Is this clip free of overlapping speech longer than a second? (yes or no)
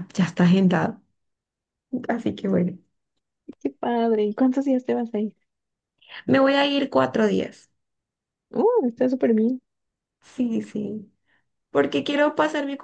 yes